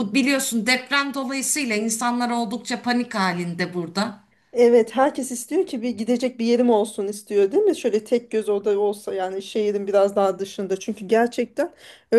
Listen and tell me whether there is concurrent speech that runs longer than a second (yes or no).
no